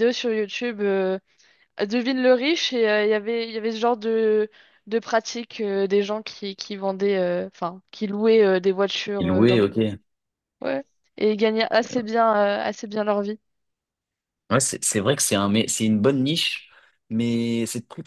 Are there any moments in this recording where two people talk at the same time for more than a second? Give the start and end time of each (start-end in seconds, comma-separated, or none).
none